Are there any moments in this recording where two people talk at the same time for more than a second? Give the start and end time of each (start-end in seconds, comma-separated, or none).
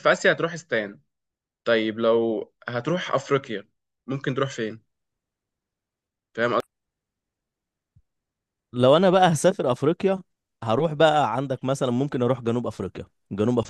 none